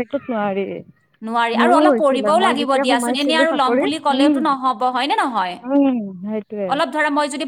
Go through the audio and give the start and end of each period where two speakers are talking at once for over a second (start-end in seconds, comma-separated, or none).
1.6-4.4